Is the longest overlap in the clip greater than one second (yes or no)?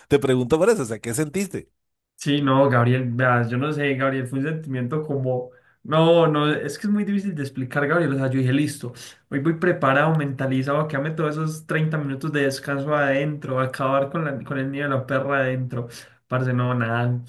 no